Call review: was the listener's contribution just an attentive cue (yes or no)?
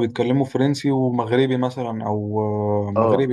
no